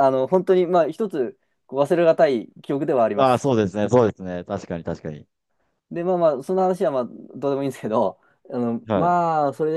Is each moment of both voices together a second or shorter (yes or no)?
yes